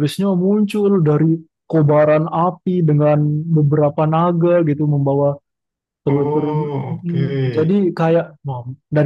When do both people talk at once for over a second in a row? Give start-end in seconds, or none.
6.0-7.8